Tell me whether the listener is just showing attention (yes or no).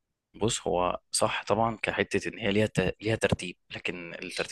yes